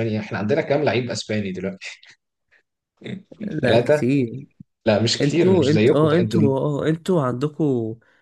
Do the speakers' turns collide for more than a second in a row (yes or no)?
yes